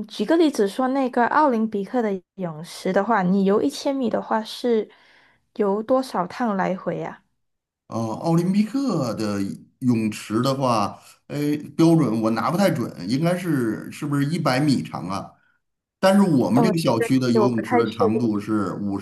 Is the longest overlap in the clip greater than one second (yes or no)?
yes